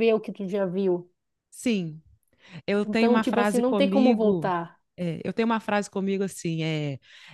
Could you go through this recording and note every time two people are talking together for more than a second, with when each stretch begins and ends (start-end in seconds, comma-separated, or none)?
2.8-4.5